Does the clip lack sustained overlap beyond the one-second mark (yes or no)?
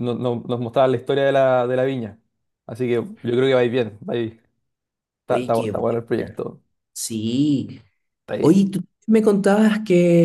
no